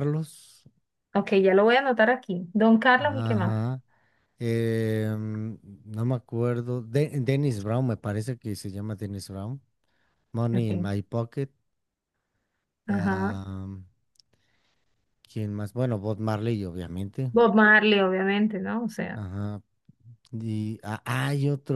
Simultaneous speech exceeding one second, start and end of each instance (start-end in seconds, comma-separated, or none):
none